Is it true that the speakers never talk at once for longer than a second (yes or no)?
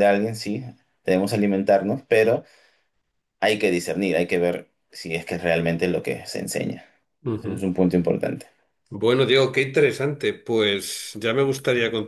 yes